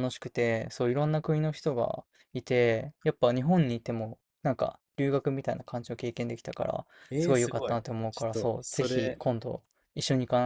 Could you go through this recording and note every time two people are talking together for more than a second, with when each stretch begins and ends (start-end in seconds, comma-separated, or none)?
7.1-9.2